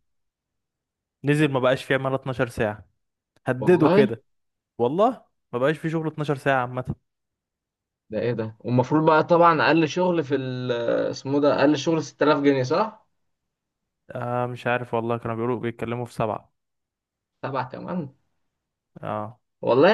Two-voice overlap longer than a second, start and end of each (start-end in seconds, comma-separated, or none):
none